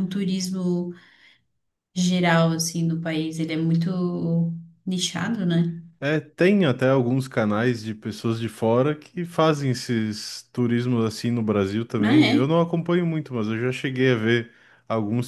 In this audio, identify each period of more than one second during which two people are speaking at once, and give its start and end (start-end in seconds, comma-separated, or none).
none